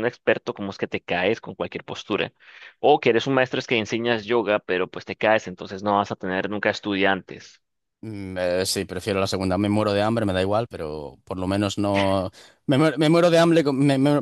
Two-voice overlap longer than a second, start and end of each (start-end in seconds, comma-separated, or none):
none